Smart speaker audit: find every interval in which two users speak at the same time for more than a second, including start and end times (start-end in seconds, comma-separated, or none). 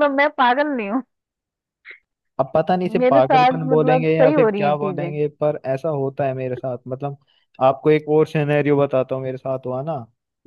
3.0-5.1